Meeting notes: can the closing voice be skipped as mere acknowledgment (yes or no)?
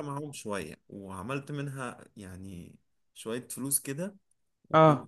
yes